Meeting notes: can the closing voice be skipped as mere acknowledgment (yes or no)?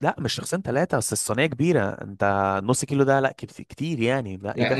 no